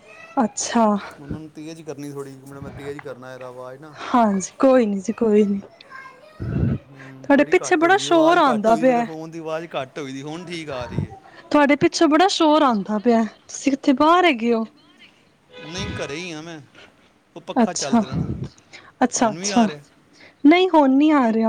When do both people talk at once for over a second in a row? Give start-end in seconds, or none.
7.1-9.0